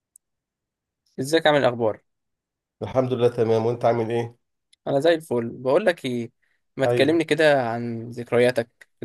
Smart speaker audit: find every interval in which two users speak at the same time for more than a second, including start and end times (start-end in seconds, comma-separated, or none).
none